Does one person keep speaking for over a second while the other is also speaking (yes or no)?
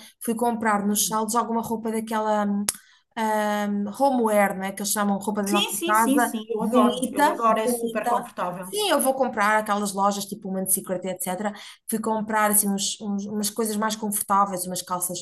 yes